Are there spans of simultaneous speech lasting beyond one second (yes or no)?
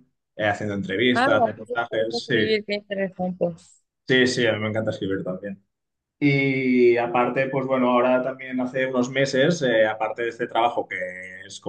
yes